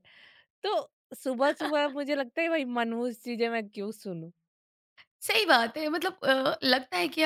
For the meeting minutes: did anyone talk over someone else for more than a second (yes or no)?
no